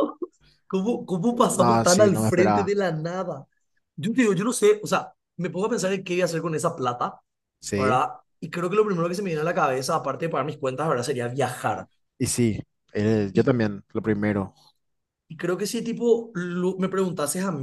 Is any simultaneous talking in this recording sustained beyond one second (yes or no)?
yes